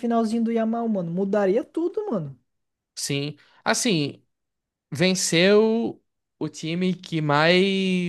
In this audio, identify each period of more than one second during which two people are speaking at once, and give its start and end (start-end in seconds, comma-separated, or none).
none